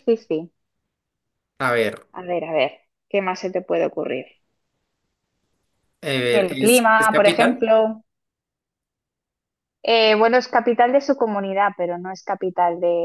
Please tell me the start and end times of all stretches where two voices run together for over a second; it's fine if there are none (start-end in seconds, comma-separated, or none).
6.3-7.7